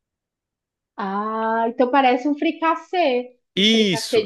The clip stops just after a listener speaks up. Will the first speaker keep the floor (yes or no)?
no